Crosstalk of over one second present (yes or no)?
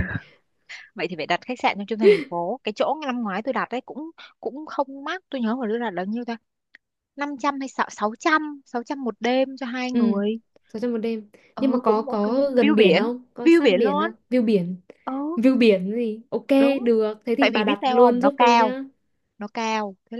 yes